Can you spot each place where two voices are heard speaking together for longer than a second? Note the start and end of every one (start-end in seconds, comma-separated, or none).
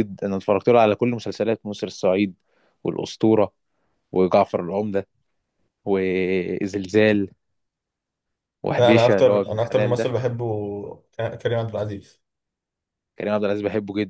8.8-10.1